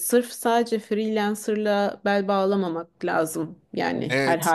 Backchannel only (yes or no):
no